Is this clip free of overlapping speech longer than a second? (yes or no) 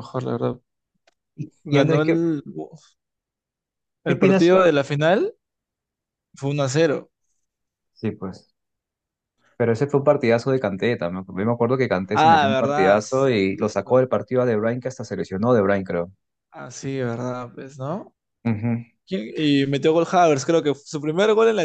no